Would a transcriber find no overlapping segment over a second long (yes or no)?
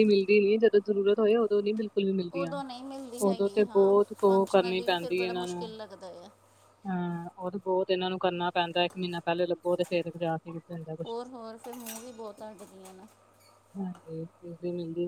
no